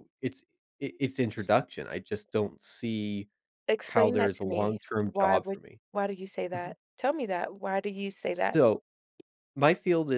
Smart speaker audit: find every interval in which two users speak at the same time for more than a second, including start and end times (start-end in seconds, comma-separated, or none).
3.8-5.8